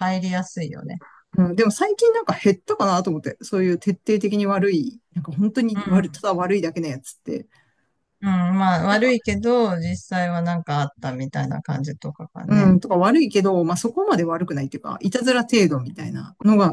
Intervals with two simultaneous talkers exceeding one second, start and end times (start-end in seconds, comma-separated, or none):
none